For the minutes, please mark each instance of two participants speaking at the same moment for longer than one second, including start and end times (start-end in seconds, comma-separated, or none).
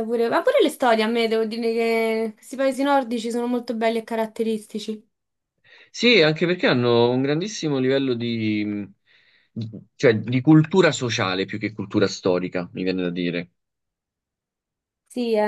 none